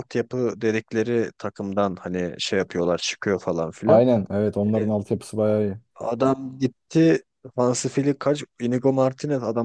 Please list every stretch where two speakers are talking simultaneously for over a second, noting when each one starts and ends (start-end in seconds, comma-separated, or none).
none